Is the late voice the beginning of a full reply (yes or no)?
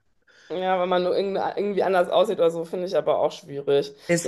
no